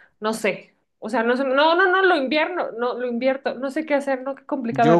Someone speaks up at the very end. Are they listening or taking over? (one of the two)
taking over